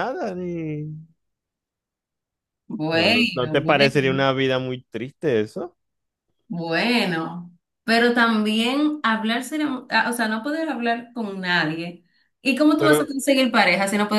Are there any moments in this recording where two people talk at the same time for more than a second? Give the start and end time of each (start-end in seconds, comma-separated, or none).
2.9-4.3